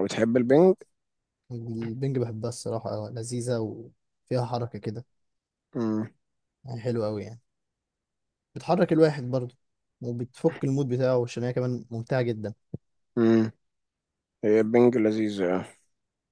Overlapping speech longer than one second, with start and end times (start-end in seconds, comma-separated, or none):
none